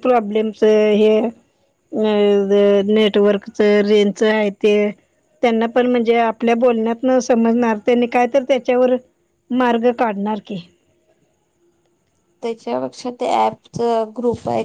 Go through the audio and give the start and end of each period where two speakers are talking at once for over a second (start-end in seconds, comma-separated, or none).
none